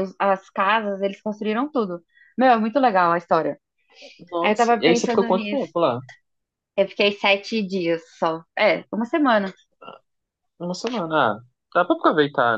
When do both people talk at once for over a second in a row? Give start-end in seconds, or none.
4.4-5.7